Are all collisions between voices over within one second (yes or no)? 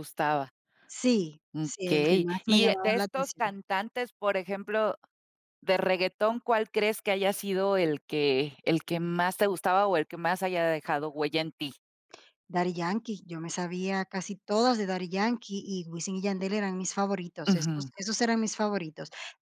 no